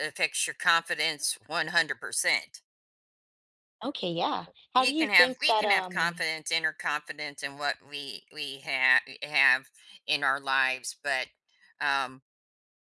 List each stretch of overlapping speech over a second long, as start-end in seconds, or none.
4.8-6.1